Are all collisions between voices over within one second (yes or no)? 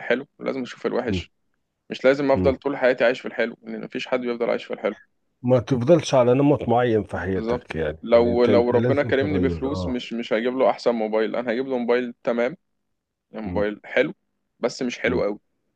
no